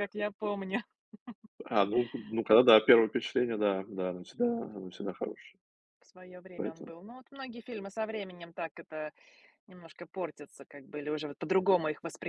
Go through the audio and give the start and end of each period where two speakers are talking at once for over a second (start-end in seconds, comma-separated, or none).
none